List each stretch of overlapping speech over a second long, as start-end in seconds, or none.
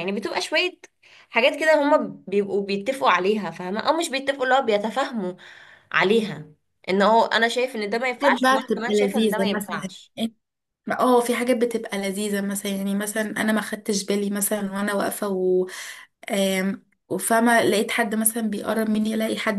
8.2-9.8